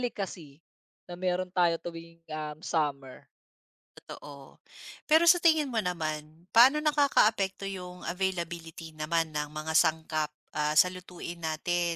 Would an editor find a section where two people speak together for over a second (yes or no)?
no